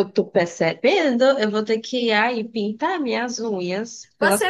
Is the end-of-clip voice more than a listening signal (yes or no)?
yes